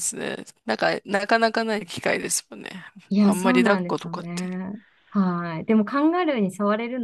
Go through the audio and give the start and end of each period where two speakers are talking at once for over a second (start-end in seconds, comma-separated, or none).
3.2-4.5